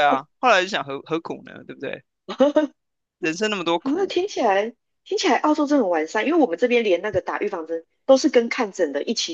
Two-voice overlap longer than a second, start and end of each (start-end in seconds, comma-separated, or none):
none